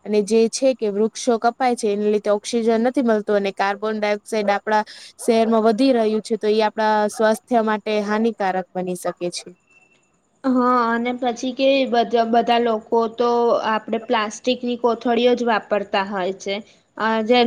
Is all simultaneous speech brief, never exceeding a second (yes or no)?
yes